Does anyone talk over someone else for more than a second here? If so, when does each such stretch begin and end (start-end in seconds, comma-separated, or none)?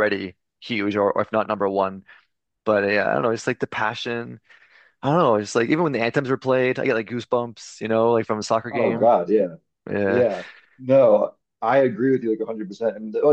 none